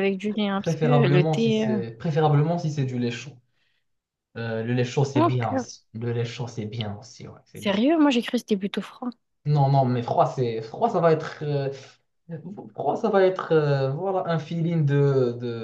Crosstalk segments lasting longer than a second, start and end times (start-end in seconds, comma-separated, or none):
0.6-1.8